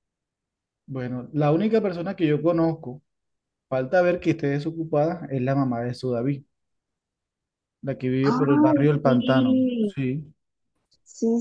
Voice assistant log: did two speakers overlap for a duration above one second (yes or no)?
yes